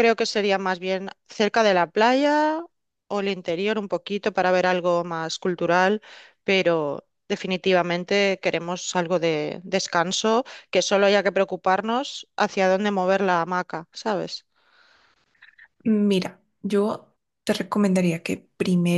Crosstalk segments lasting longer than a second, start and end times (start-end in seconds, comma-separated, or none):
none